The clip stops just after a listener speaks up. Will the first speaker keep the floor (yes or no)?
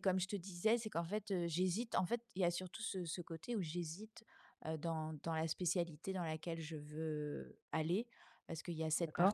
yes